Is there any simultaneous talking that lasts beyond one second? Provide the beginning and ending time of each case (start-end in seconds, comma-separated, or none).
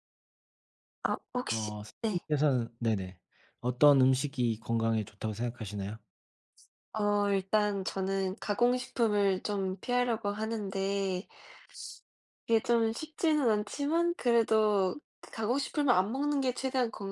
none